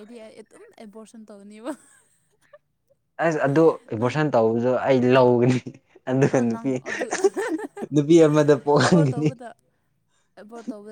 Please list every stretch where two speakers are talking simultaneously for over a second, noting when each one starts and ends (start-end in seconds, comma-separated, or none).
none